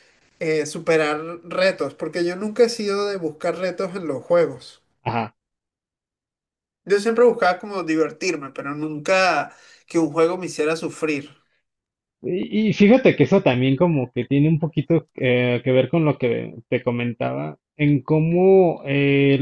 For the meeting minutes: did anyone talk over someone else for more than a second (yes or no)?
no